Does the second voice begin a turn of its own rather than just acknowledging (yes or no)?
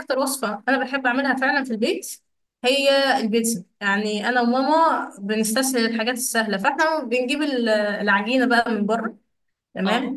no